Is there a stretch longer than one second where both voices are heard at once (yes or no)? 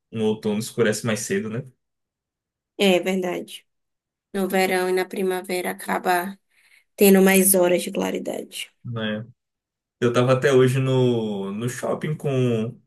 no